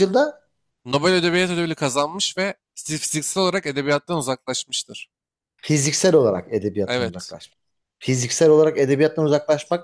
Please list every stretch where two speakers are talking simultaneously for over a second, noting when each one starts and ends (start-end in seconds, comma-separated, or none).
none